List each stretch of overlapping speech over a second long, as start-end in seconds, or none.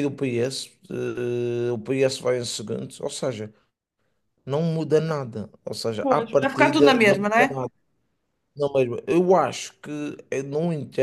6.0-7.6